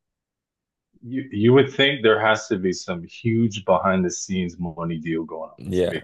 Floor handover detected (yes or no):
yes